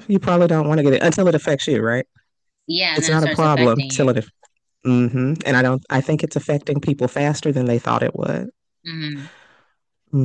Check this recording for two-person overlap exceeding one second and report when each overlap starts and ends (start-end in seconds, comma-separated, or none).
2.9-4.2